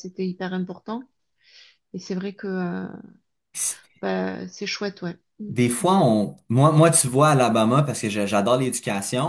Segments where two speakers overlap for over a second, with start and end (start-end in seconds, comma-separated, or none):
none